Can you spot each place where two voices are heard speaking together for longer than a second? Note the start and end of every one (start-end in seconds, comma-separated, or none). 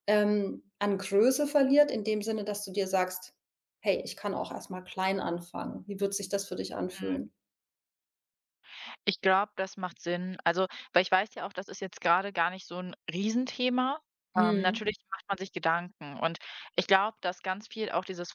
none